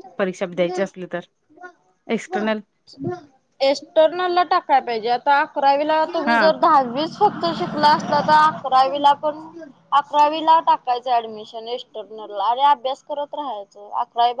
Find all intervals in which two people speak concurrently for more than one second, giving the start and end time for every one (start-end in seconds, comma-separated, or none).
none